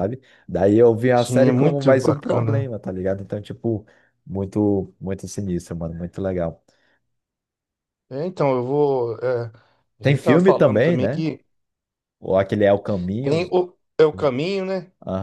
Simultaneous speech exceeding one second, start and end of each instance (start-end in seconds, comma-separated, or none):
1.2-2.6, 10.0-11.3